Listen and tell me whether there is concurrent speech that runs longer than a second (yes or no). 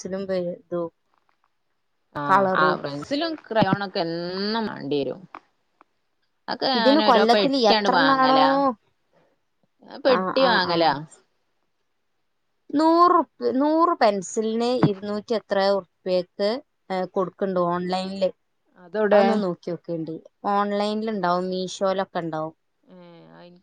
yes